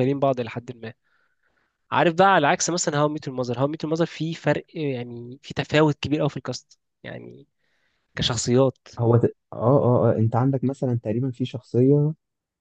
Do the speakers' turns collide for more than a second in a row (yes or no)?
no